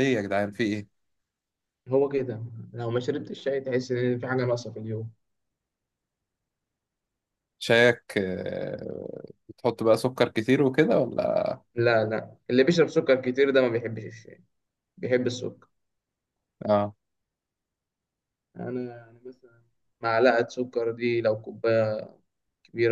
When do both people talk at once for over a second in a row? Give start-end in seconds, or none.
none